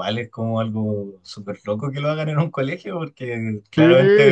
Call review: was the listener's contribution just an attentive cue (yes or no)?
no